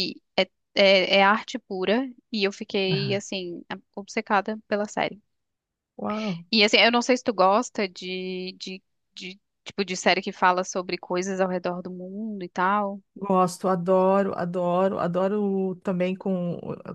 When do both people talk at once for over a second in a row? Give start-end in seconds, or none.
none